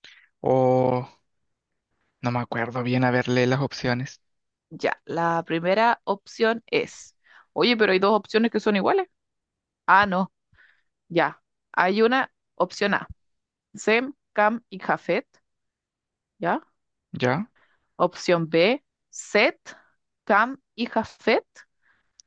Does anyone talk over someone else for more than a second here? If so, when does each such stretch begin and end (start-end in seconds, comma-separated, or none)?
none